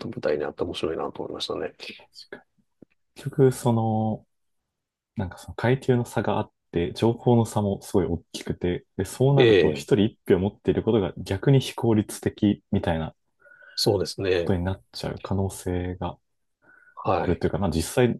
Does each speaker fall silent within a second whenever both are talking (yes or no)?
yes